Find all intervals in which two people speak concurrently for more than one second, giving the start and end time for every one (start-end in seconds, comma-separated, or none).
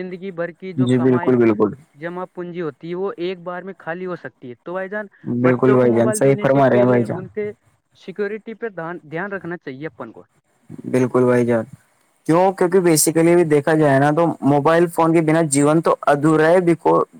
5.4-7.2